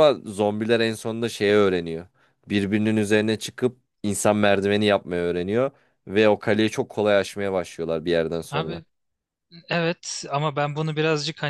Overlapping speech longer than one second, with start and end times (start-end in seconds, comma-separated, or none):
none